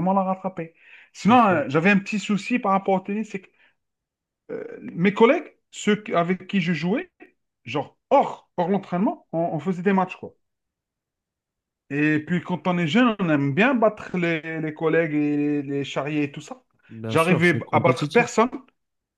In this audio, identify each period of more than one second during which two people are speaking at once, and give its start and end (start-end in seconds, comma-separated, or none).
17.1-18.3